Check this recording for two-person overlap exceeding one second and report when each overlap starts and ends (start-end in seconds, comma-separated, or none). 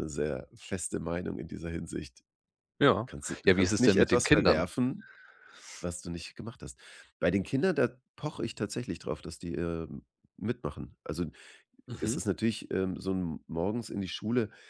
3.5-4.7